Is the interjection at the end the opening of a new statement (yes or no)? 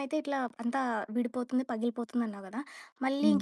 no